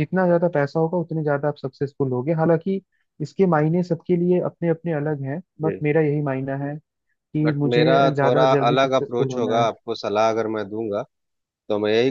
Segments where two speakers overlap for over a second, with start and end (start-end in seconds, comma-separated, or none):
7.4-9.7